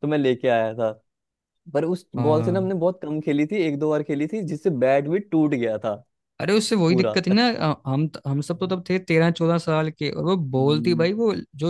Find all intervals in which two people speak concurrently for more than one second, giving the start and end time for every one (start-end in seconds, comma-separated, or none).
none